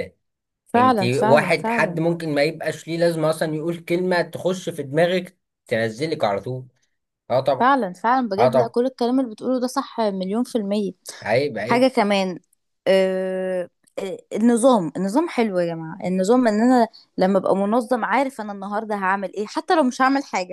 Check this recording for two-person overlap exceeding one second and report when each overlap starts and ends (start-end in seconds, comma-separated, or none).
0.8-2.0